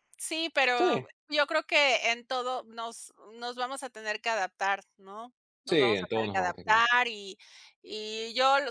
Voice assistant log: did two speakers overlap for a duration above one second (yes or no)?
yes